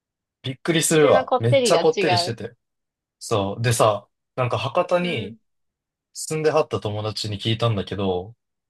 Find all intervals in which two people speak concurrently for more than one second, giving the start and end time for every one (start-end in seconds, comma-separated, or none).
0.9-2.4